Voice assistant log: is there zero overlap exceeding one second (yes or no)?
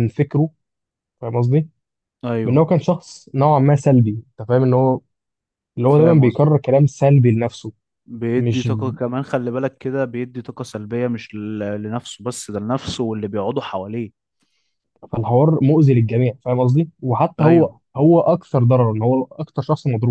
yes